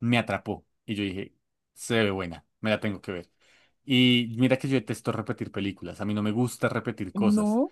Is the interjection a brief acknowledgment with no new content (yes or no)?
yes